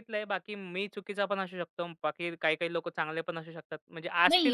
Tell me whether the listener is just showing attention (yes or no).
no